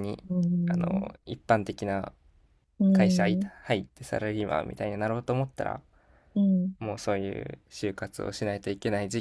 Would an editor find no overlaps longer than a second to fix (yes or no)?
yes